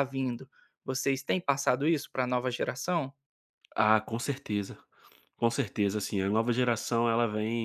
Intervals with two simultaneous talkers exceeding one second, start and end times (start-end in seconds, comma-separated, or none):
none